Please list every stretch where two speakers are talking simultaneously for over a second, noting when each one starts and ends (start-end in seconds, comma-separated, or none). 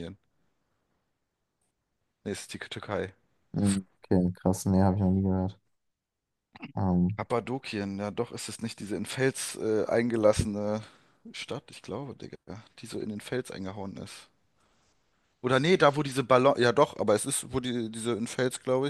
none